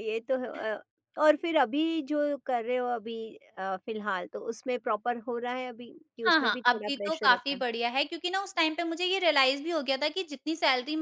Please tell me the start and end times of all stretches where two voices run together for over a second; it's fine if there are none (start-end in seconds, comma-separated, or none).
6.3-7.6